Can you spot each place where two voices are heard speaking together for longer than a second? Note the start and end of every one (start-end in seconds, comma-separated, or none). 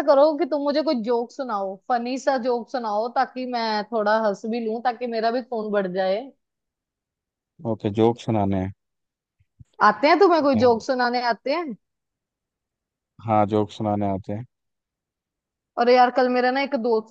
none